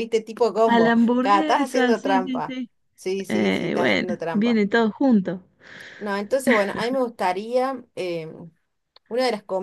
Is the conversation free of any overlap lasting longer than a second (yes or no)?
no